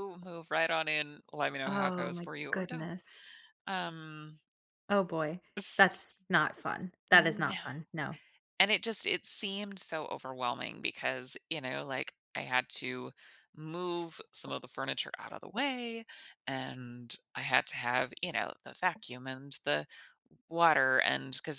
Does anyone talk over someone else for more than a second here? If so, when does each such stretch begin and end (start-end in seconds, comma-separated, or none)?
1.6-2.9